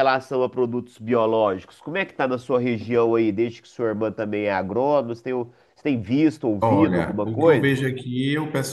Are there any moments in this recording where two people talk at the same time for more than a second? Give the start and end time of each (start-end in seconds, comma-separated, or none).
6.6-7.8